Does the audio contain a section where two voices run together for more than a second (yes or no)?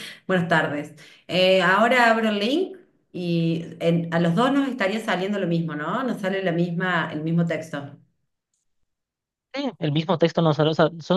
no